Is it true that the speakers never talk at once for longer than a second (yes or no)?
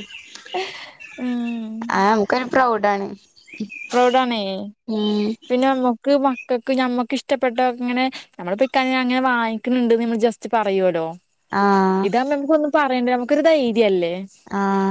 yes